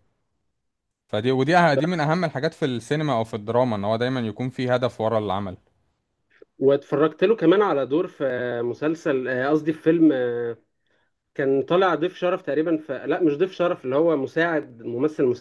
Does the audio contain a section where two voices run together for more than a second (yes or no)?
no